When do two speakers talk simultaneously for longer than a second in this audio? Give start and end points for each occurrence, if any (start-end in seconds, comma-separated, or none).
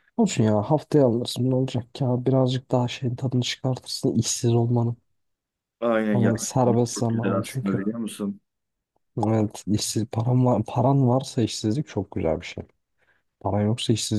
6.1-7.8